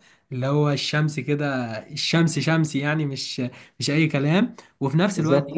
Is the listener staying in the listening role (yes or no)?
yes